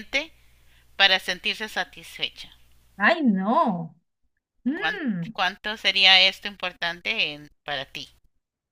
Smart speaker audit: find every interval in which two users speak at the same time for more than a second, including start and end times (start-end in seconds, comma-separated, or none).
none